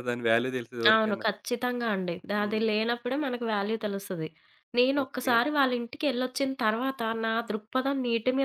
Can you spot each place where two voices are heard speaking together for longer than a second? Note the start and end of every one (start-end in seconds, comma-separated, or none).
none